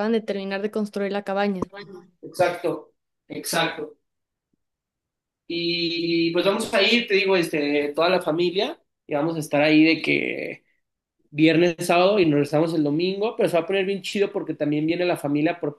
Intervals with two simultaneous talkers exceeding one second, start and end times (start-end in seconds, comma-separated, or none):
none